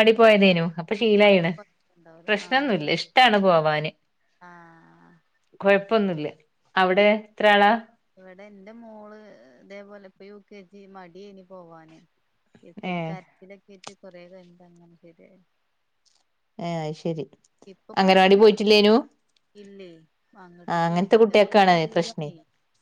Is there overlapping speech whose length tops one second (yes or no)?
yes